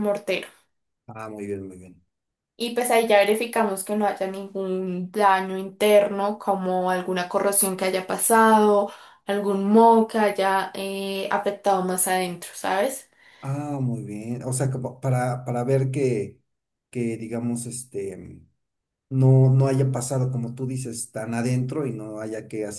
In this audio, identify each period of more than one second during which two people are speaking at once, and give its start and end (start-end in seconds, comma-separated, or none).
none